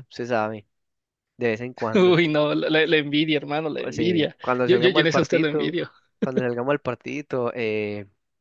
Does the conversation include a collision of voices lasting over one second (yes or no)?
yes